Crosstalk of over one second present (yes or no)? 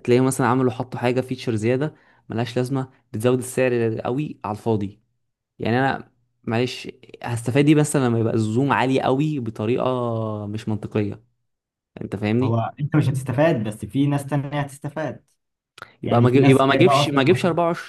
yes